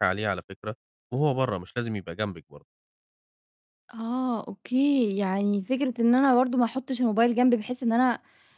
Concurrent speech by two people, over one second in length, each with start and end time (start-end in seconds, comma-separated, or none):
none